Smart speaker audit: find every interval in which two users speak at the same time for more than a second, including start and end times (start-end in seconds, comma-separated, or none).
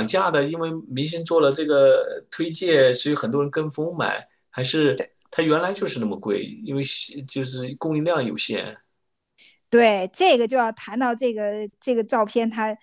none